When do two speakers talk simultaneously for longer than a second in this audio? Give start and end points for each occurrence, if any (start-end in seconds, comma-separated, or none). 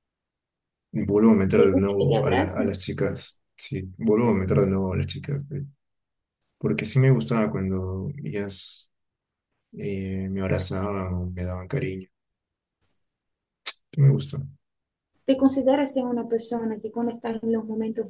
1.6-2.8